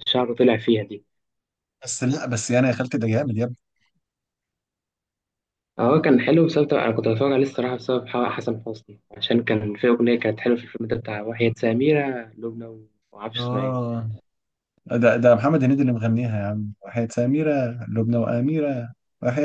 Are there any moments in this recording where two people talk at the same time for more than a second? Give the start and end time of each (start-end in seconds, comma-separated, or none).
none